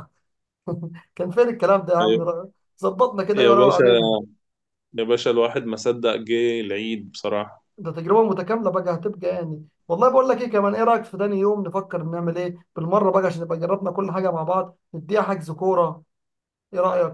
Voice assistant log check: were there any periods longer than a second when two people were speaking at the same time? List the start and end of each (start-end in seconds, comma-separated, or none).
none